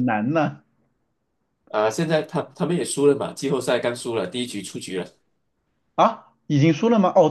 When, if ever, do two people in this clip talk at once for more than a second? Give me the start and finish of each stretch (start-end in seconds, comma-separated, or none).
none